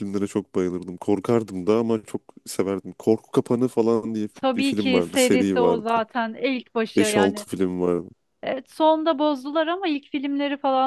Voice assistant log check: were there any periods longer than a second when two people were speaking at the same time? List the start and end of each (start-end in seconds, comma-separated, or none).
4.3-5.9